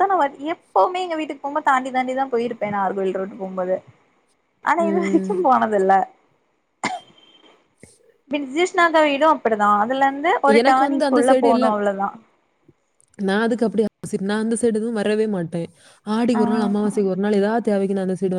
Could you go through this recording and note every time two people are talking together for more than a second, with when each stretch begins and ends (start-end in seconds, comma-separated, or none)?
none